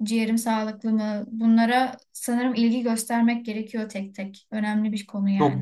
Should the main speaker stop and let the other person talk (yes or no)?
yes